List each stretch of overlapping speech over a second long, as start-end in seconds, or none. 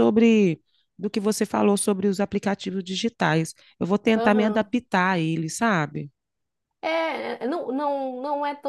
none